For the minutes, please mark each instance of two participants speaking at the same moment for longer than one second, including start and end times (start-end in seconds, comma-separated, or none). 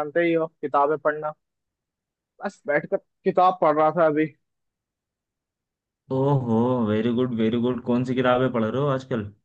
none